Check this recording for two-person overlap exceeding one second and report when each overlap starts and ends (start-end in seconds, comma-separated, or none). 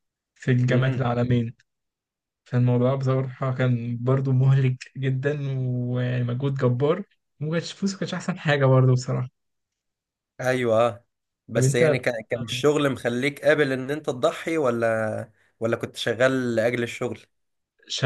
none